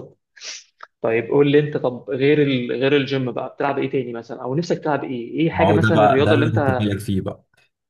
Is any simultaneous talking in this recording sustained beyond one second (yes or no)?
yes